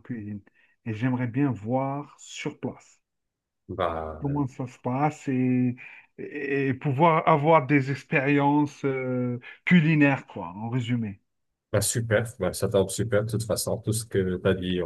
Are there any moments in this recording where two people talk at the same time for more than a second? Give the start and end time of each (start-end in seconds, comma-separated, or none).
none